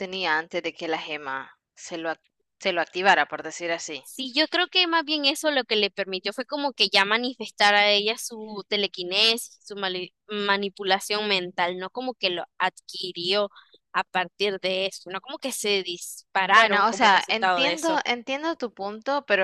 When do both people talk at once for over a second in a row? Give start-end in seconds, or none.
16.5-18.0